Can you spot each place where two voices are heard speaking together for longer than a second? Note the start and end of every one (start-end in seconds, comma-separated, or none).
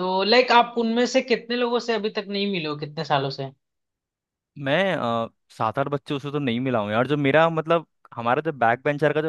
none